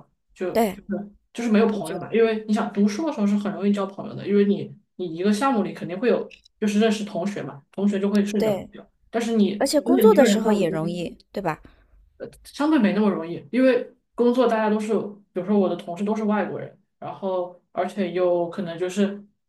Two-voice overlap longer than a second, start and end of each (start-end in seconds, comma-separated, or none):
9.6-11.1